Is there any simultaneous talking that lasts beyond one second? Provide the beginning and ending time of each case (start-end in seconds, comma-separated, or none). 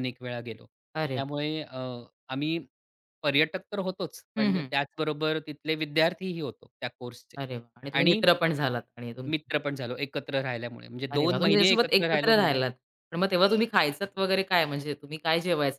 11.1-12.7